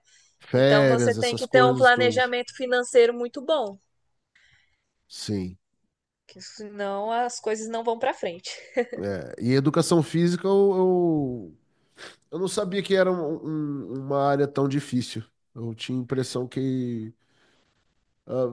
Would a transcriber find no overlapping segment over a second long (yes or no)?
no